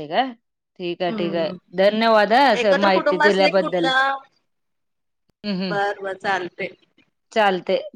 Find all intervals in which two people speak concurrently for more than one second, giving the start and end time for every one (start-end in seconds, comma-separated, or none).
2.6-3.9